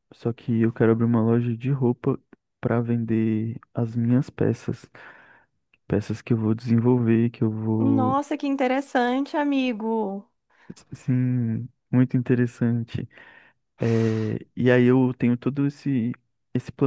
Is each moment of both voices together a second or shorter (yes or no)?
yes